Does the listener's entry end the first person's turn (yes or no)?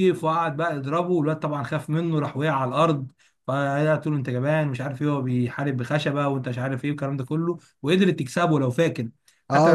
yes